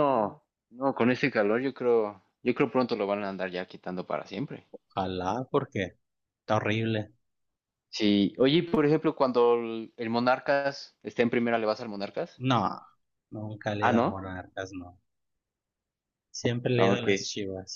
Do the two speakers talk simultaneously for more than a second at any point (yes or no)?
no